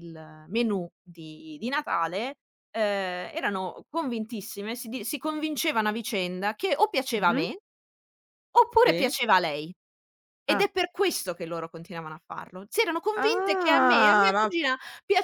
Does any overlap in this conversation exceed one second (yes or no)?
yes